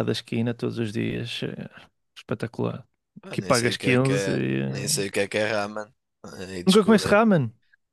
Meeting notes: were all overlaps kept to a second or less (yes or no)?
no